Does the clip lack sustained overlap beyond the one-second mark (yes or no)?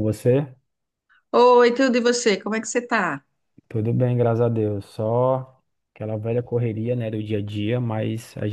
yes